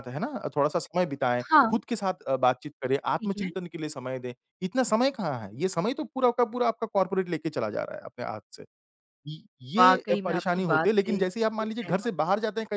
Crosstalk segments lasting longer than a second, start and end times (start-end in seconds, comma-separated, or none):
9.8-12.1